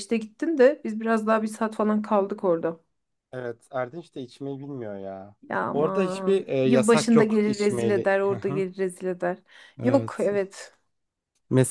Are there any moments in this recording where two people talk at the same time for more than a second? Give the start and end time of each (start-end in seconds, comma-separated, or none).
5.7-8.6